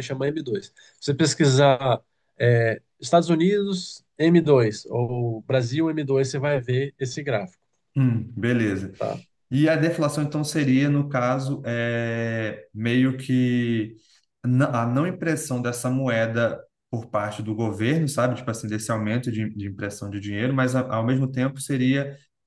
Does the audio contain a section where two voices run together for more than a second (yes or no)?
no